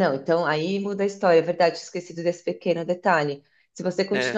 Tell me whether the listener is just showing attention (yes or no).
yes